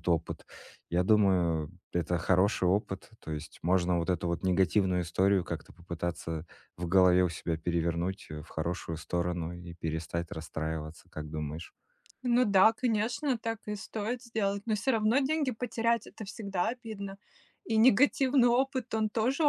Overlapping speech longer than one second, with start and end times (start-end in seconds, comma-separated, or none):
none